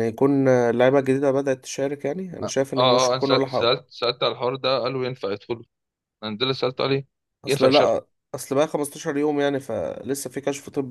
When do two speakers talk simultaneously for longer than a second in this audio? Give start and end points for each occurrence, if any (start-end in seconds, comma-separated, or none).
2.4-3.7